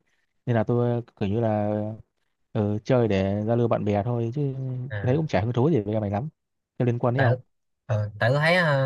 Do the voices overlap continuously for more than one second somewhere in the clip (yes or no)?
no